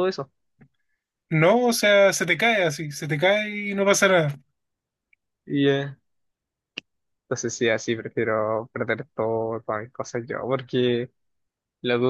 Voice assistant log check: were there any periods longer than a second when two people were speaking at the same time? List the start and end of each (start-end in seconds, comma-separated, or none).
none